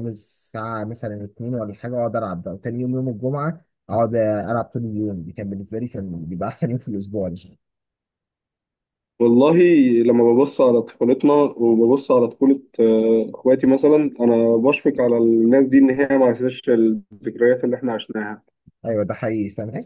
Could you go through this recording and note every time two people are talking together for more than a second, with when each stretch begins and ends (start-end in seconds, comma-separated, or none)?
none